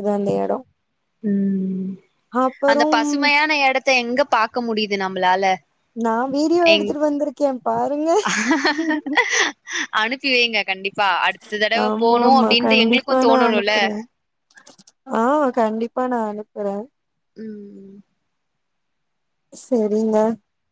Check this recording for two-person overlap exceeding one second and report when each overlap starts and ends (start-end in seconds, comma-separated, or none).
11.9-13.7